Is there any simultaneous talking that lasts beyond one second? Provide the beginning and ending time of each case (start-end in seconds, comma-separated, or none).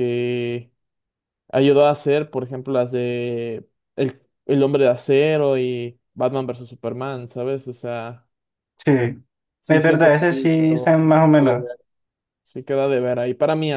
9.7-11.7